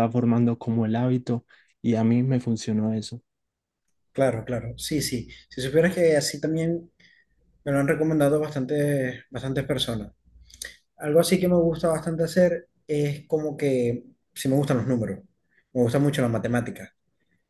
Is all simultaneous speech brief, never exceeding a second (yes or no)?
yes